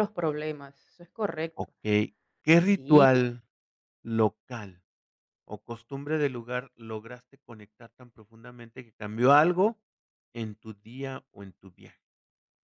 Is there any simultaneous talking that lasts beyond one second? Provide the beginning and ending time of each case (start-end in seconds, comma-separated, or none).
none